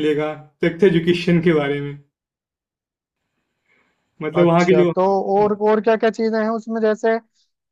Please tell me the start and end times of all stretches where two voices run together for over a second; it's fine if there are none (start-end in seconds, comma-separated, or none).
none